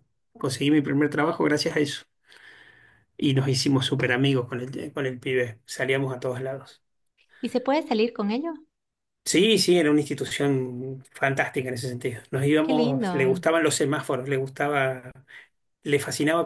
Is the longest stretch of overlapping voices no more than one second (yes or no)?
yes